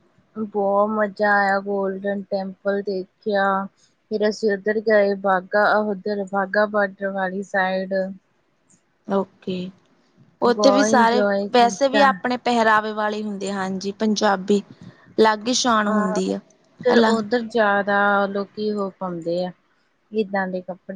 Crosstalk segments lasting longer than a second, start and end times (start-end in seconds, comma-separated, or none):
10.5-12.0